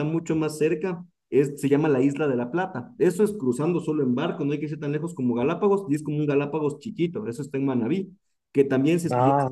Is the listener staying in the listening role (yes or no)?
yes